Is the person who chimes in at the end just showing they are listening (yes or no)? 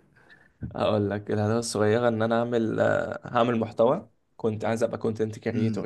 no